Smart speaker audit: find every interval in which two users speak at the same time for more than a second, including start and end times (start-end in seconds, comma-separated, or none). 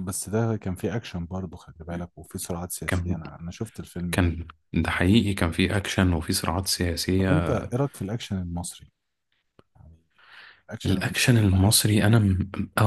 10.8-12.2